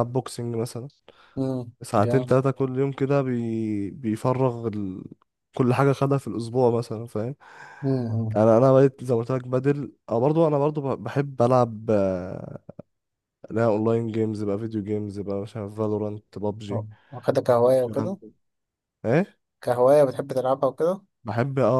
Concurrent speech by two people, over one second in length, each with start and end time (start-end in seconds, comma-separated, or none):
none